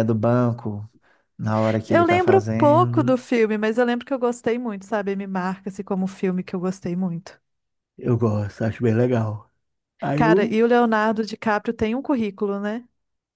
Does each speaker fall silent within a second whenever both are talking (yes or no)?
no